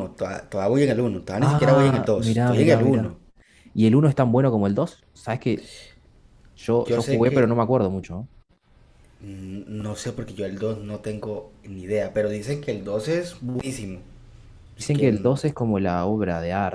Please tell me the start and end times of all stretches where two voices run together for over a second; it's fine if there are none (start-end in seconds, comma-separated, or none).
1.4-3.1